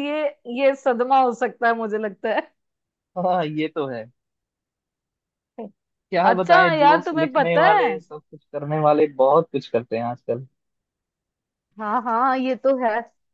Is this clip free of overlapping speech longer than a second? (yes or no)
no